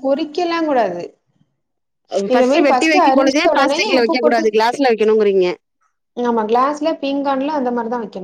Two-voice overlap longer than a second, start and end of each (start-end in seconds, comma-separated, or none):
2.7-4.5